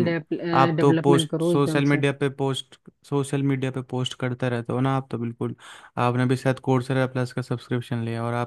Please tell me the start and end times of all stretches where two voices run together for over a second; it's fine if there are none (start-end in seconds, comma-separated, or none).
0.5-2.0